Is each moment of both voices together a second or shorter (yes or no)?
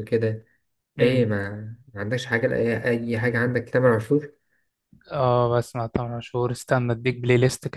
yes